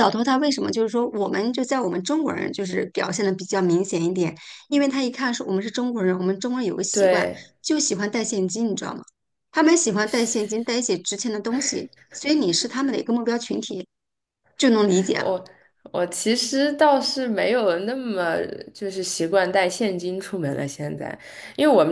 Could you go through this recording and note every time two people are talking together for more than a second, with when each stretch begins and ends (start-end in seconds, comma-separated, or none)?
none